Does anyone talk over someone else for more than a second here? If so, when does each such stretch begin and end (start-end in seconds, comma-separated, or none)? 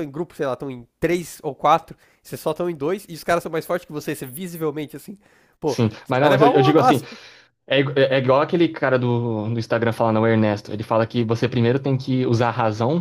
5.6-7.0